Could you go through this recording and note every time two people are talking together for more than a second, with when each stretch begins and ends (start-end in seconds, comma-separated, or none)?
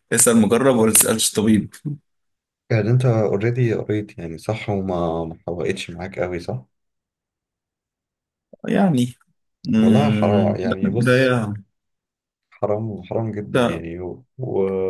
9.8-11.4